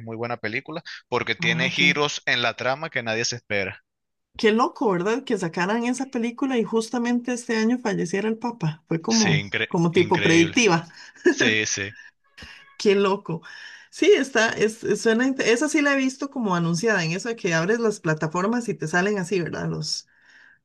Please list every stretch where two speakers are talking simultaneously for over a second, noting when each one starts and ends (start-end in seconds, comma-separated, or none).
9.1-10.6